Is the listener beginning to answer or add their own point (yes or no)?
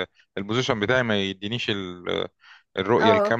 no